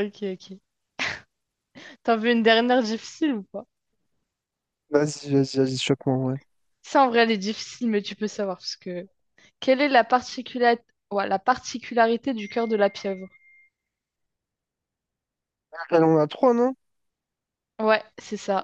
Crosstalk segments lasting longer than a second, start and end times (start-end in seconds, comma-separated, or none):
none